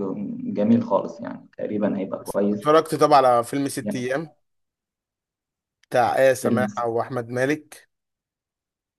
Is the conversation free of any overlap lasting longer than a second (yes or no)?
yes